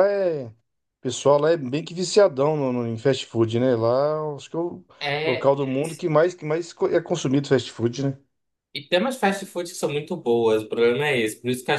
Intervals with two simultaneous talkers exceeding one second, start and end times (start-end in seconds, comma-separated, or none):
none